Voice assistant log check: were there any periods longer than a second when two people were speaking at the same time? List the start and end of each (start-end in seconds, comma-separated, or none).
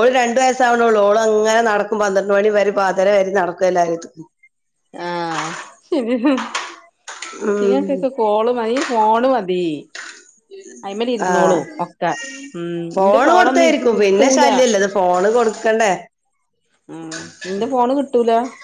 12.9-14.4